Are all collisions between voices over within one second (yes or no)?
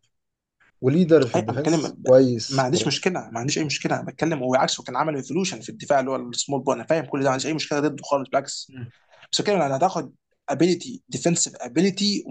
no